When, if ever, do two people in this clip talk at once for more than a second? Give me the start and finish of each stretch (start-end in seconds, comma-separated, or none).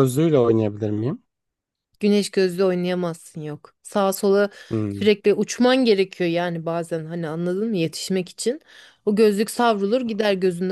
none